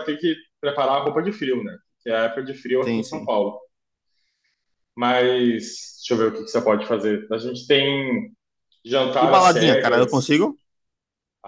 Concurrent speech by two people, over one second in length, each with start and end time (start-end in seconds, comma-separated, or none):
9.2-10.4